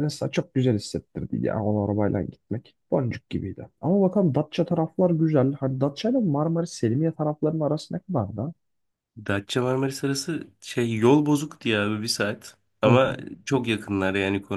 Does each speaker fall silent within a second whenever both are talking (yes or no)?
yes